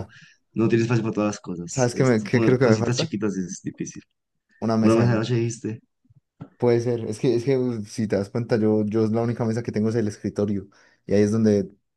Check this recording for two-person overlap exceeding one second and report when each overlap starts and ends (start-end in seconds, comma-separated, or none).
1.7-3.1